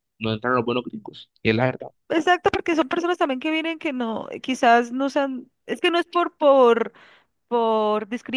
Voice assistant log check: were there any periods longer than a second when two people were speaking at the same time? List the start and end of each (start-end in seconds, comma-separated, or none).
none